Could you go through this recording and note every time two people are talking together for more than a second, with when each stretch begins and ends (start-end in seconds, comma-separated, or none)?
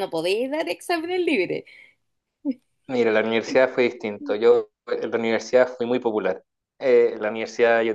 none